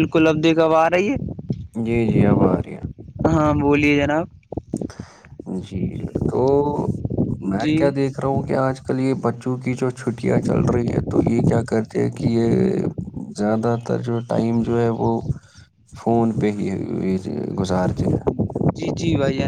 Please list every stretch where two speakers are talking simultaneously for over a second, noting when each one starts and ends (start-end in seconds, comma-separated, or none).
none